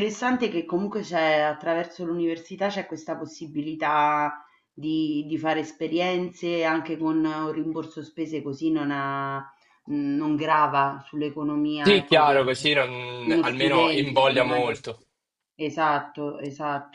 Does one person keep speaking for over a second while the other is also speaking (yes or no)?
yes